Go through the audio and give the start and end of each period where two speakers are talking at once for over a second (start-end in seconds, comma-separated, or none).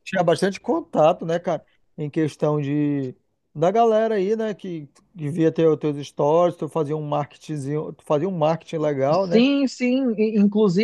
none